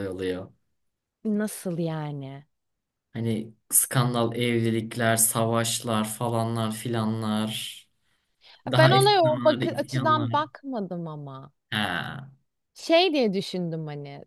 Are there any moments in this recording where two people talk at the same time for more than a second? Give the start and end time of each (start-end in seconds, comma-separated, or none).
8.7-10.4